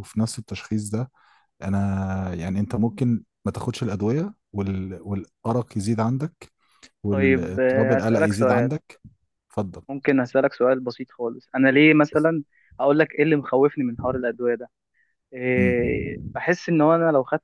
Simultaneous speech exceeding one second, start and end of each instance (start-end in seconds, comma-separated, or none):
7.1-8.7